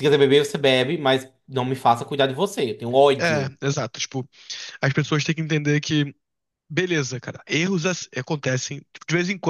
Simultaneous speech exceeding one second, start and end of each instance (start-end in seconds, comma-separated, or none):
none